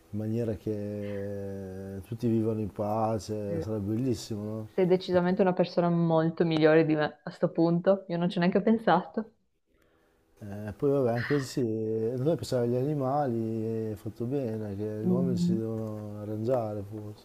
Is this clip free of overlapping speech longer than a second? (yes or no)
yes